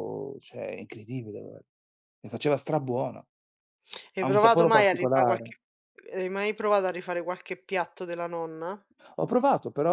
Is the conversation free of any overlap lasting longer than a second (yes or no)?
no